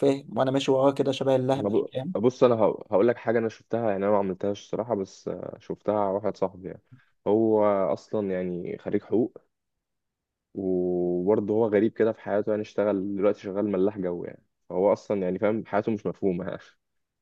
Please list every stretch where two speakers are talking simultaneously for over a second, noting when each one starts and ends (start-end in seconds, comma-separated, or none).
none